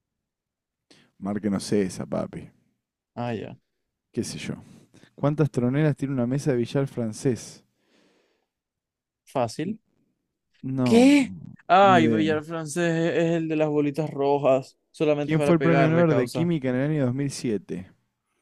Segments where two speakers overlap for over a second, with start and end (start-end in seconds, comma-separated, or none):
15.2-16.5